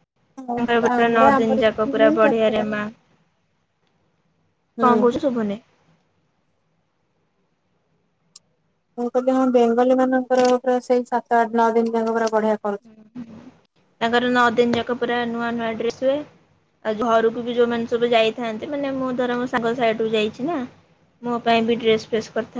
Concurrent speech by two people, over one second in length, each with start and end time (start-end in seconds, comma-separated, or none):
0.5-2.6